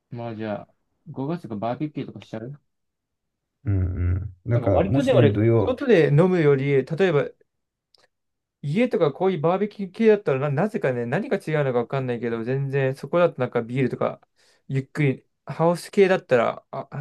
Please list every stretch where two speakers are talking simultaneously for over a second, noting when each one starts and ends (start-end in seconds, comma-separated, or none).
4.5-5.8